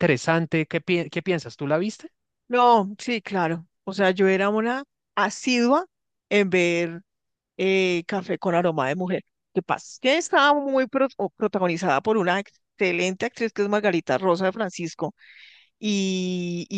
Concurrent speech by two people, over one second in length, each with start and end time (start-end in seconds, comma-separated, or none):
none